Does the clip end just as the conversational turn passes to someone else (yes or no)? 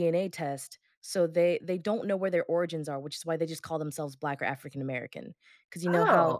no